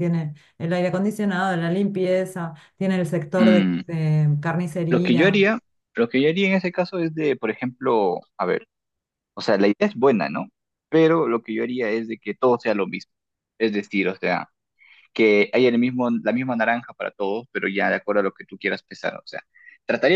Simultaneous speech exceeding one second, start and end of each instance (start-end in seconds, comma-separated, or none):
none